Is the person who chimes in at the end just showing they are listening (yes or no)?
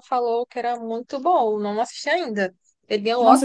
no